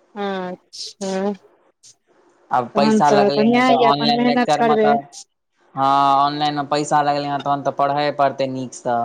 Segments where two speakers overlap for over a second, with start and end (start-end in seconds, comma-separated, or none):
2.8-4.9